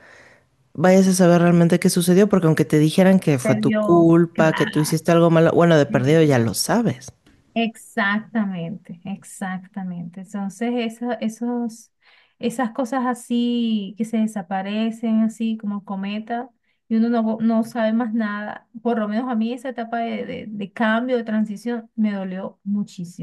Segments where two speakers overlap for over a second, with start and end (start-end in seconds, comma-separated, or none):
3.4-5.0